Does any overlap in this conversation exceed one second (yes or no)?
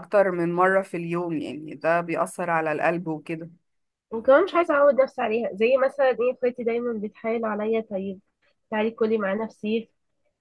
no